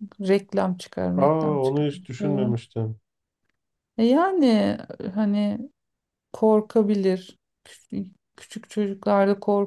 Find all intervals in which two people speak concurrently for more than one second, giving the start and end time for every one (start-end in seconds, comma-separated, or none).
1.2-2.5